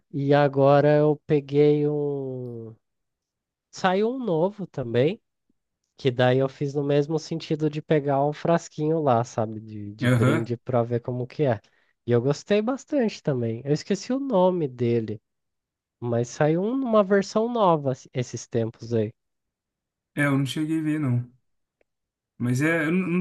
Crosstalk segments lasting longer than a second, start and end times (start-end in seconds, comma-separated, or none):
none